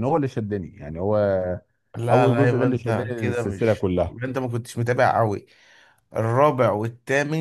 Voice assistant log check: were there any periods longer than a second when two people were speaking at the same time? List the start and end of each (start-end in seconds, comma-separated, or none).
2.1-4.2